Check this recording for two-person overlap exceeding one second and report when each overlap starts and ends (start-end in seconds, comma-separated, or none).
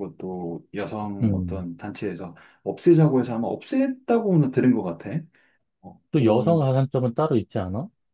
none